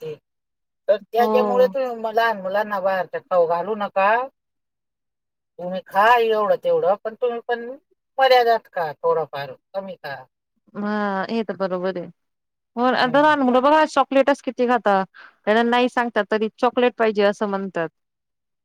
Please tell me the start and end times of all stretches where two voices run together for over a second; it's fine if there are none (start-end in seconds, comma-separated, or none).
none